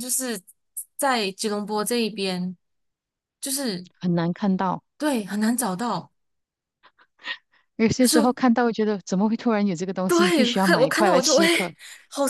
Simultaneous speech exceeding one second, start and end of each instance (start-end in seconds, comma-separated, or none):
10.1-11.5